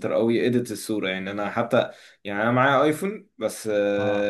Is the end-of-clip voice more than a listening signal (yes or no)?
no